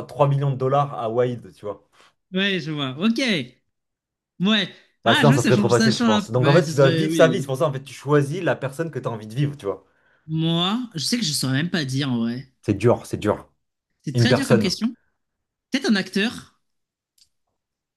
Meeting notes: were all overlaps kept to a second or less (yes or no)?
no